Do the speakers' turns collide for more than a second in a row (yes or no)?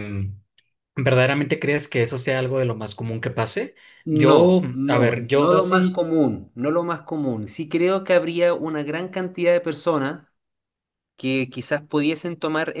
yes